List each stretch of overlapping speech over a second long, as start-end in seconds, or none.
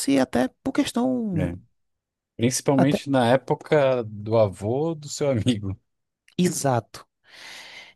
none